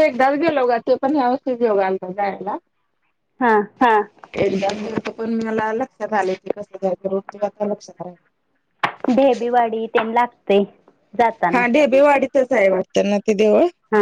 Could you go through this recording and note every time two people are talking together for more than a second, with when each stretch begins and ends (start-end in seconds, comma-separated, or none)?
none